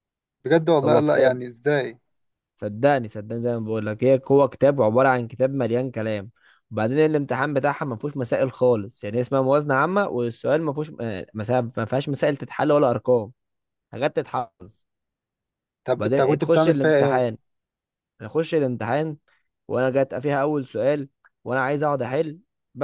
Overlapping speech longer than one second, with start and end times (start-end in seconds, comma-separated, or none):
16.0-17.2